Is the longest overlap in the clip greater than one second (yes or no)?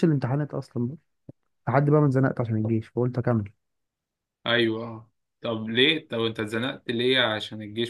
no